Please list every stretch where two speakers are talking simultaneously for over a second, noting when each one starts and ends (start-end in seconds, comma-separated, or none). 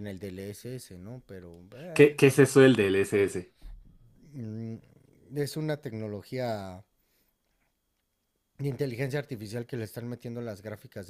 none